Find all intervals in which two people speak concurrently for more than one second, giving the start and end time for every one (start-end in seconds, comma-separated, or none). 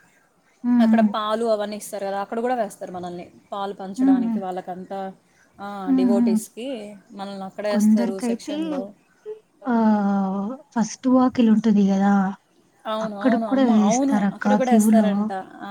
13.1-15.1